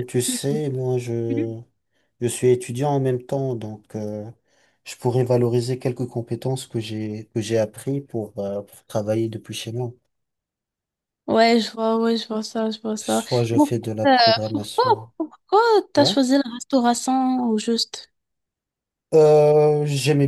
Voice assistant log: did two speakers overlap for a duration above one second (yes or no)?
yes